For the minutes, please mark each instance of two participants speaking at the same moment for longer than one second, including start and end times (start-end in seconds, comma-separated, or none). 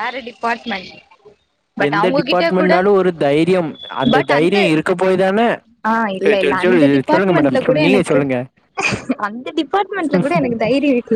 6.2-8.2